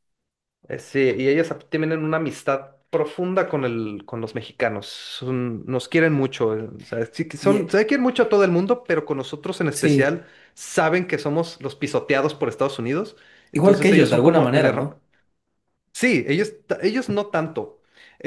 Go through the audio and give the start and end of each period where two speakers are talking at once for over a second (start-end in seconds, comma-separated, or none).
13.5-15.0